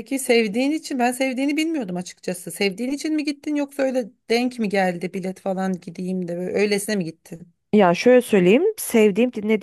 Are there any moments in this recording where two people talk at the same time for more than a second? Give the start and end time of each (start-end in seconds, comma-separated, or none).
none